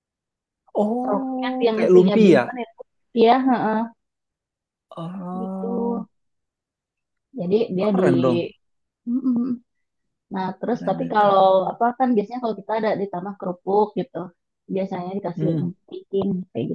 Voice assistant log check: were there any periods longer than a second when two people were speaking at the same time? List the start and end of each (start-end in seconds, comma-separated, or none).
1.0-2.4